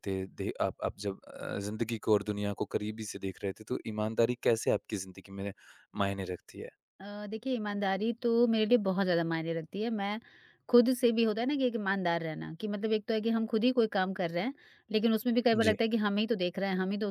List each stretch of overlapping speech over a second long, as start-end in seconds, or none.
none